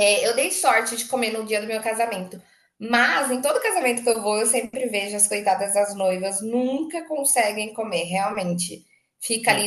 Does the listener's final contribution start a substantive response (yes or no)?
no